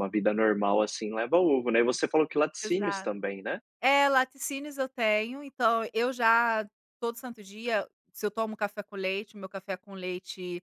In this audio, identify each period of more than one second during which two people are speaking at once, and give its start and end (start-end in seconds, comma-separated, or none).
none